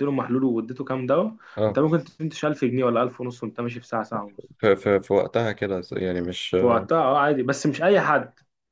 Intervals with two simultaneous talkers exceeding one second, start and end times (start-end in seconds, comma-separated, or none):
none